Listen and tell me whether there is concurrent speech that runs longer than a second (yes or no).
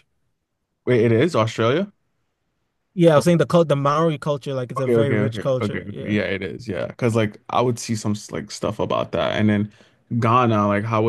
yes